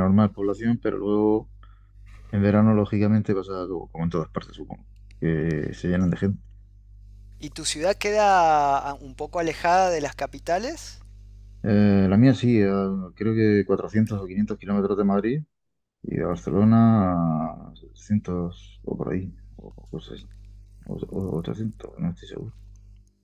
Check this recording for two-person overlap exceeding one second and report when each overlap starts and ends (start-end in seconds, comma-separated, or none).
none